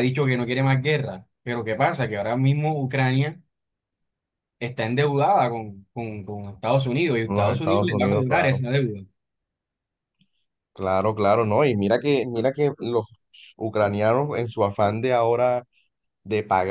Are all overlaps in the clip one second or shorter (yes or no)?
no